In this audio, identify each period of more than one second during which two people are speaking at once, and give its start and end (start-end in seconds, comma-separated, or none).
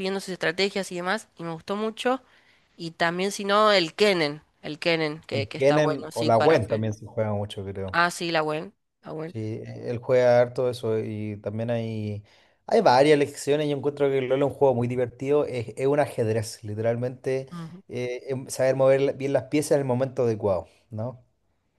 5.3-6.8